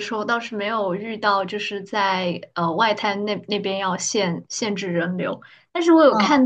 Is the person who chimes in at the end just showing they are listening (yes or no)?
yes